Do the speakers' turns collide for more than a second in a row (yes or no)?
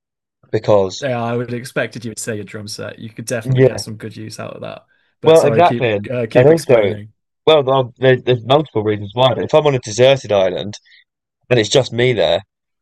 yes